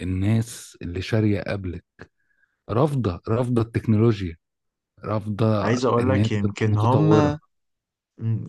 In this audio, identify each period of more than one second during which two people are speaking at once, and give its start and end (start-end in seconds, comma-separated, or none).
5.6-7.4